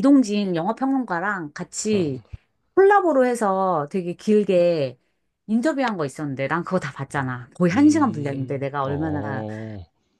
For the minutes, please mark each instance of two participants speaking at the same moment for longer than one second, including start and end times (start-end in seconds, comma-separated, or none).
7.7-9.4